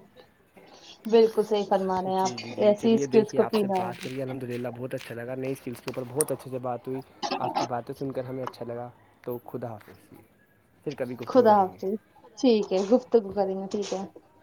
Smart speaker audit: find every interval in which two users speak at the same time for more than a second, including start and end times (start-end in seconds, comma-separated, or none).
2.2-4.2